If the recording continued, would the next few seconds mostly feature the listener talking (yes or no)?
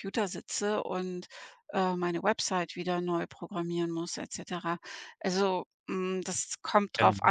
no